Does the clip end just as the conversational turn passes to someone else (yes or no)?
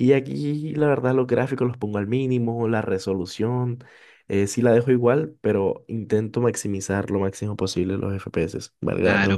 yes